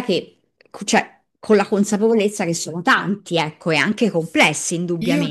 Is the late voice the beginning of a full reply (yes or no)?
yes